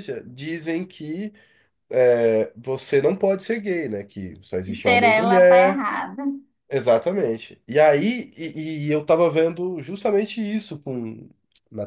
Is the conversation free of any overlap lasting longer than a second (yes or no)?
no